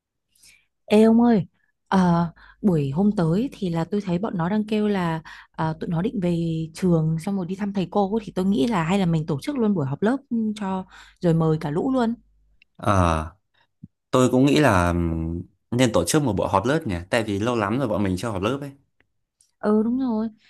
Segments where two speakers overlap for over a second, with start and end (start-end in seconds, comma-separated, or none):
none